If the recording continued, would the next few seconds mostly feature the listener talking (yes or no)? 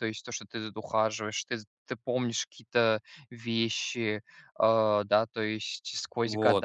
yes